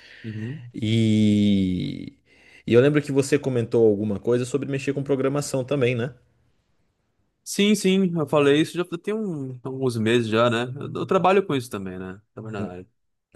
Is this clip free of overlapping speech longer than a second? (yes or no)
yes